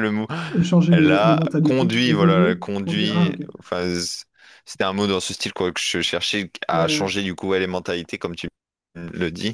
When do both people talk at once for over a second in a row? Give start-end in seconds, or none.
0.9-3.5